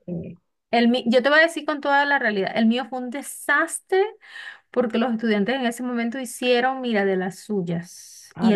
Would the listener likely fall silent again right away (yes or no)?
yes